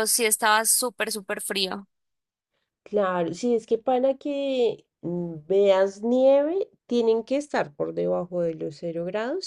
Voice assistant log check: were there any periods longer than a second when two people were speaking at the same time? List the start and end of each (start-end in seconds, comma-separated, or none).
none